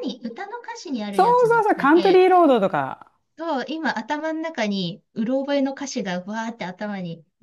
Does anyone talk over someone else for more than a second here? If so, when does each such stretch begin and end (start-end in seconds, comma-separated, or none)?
1.1-2.5